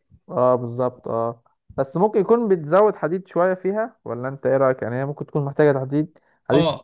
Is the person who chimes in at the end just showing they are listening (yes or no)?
no